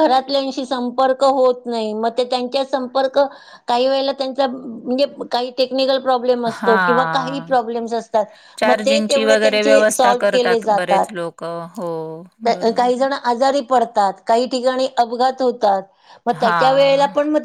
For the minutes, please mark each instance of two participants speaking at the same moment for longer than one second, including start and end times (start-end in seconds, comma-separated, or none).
none